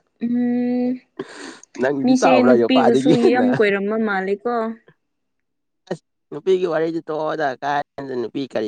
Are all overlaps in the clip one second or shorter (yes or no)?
no